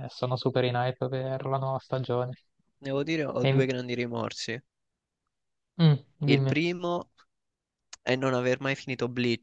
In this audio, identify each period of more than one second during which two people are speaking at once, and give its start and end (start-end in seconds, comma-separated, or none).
none